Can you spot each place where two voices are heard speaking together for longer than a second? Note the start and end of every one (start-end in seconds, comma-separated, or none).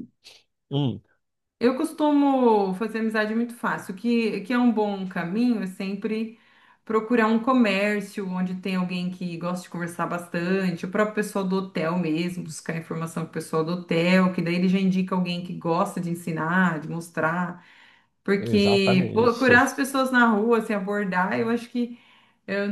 18.4-19.7